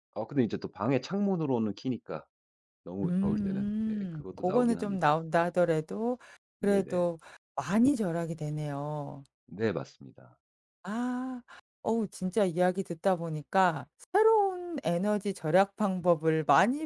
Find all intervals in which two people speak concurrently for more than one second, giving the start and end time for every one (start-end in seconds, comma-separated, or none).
3.0-5.0